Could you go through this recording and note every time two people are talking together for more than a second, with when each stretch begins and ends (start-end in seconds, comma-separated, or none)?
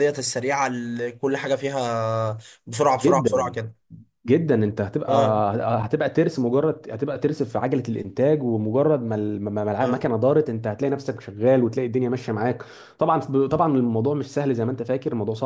none